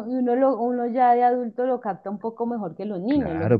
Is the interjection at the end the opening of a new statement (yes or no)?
yes